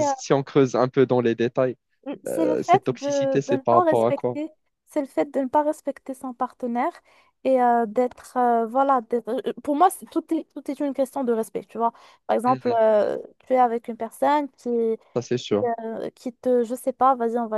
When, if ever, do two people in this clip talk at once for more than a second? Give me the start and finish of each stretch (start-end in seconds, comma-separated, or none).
2.3-4.4